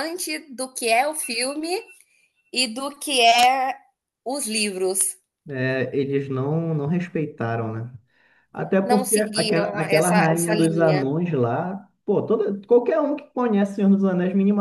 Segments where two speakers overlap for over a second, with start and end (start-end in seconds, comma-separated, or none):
8.8-11.1